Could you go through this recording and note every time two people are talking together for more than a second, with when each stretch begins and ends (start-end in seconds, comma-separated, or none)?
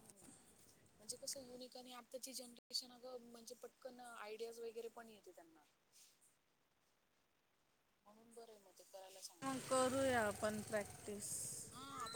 none